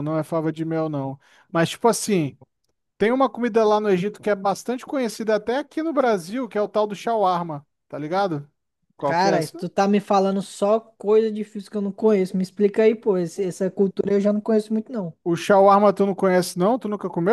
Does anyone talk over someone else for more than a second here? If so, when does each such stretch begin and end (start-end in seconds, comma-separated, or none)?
none